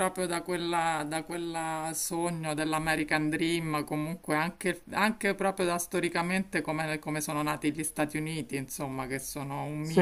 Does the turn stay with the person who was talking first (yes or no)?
yes